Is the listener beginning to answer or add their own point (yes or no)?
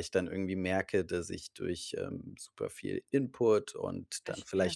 no